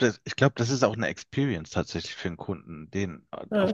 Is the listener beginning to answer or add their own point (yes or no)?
no